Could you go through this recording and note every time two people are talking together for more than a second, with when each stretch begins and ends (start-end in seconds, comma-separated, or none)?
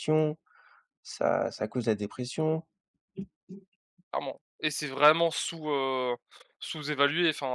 none